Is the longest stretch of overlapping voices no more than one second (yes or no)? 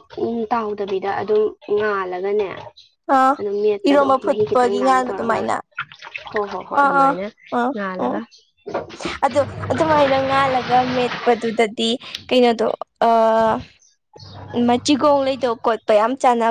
no